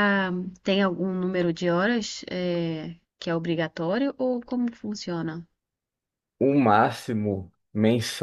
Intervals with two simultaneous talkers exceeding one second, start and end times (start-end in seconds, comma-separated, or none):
none